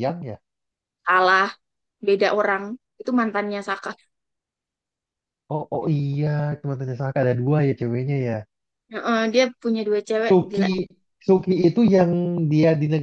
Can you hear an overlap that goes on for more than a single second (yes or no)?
no